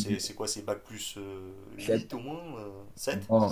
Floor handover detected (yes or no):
yes